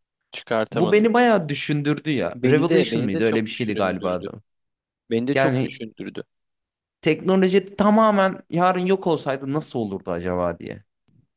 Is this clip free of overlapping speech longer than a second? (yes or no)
no